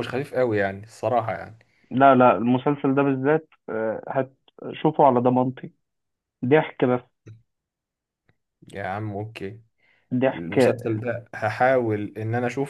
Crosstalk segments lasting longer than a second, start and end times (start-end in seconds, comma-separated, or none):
none